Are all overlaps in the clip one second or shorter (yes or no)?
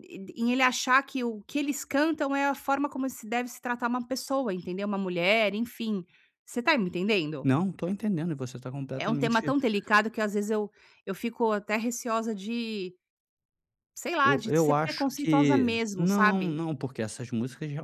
no